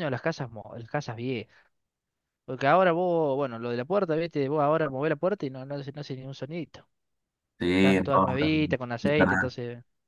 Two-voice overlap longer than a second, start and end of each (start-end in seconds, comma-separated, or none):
7.8-9.6